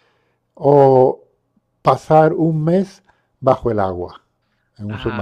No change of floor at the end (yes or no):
no